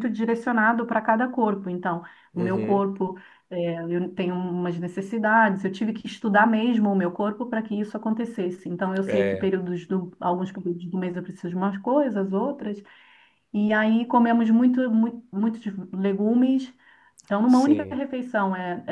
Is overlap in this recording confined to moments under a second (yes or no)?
yes